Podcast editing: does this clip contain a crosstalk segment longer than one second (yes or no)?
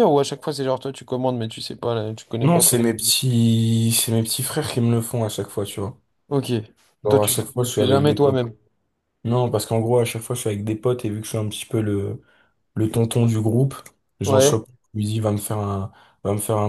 yes